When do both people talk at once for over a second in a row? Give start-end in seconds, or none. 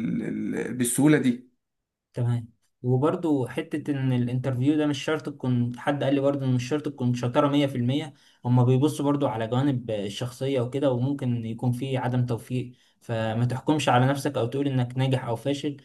none